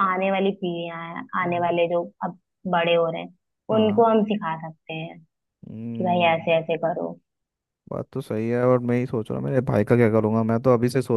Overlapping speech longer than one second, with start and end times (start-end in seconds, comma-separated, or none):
none